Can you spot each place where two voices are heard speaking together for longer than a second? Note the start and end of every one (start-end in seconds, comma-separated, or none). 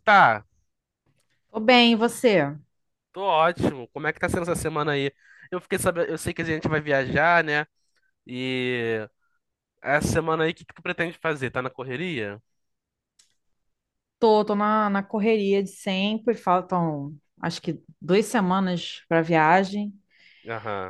none